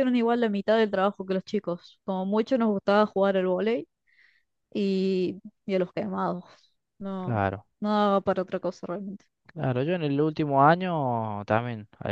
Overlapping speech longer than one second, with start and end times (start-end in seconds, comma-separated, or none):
none